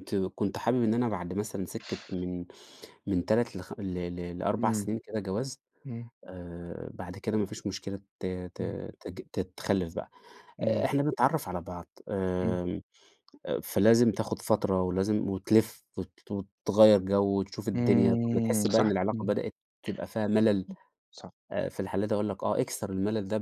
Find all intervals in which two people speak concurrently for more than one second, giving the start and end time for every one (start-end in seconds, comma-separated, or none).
17.7-19.3